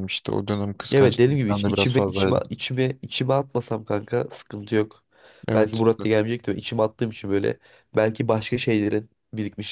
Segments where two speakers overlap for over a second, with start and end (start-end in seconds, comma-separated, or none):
0.9-2.4